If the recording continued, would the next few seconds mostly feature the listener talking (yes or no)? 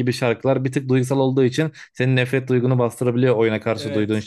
no